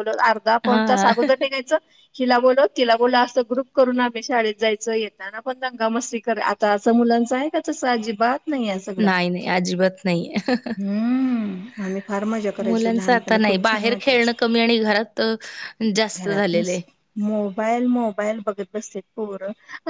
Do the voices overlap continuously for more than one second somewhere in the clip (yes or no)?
yes